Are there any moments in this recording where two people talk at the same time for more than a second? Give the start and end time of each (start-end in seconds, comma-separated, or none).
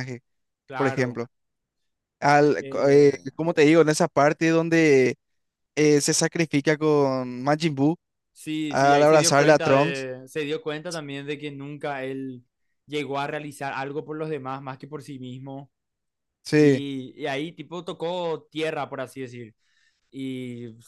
8.7-10.1